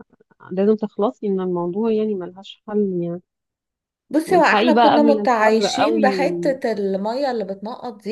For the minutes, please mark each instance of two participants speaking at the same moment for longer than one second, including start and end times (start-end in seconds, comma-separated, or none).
4.3-6.3